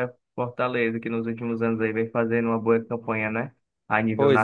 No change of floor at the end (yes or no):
no